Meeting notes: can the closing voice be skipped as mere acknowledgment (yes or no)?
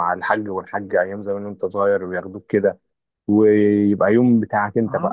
no